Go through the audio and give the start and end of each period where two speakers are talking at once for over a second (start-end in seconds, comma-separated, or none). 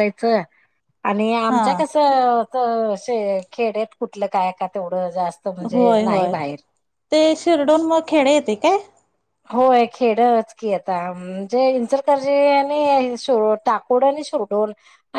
none